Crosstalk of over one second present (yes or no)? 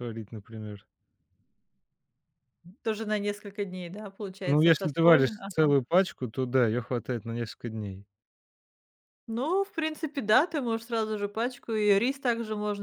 yes